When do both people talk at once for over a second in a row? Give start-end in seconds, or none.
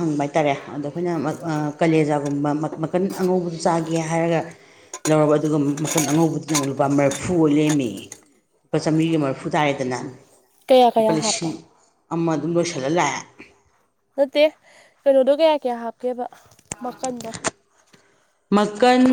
none